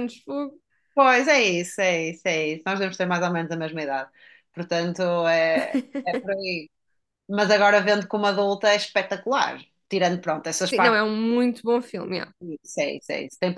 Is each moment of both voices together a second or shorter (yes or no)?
yes